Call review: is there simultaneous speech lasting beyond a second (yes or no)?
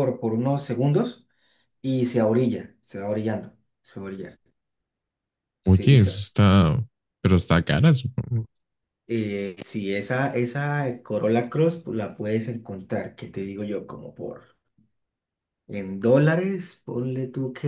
no